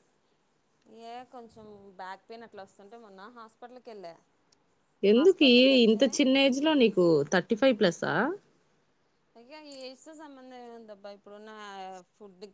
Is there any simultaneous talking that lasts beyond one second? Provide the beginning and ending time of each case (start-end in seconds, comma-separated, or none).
none